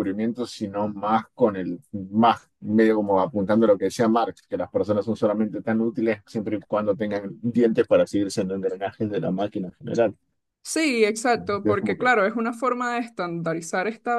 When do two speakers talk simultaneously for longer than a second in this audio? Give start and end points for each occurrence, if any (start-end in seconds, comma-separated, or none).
none